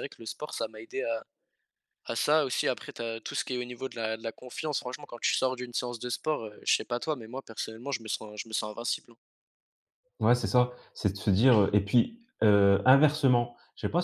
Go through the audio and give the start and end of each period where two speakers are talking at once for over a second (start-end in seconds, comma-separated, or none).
none